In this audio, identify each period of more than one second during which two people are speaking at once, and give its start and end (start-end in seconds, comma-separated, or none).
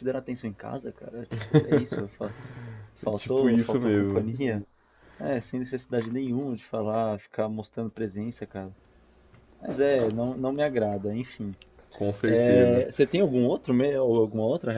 3.0-4.3